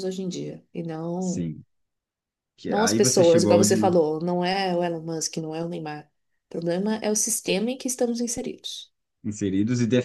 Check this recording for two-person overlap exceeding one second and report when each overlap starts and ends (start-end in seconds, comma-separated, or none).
2.7-3.9